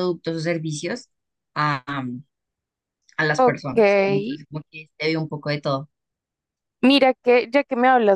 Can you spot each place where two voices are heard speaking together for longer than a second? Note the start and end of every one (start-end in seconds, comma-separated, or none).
none